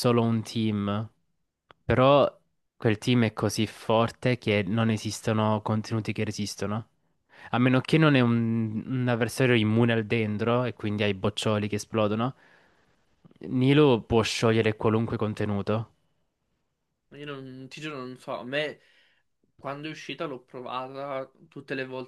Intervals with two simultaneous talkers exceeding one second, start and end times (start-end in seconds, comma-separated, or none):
none